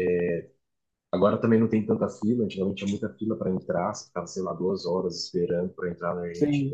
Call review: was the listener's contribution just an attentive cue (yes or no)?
yes